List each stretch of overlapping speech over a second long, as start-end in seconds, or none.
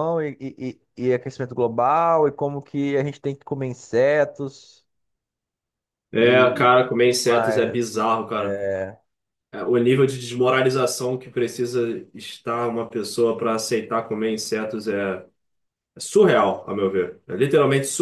6.2-8.6